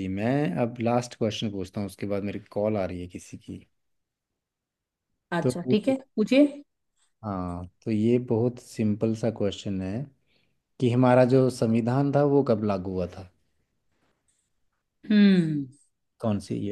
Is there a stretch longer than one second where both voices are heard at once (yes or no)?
no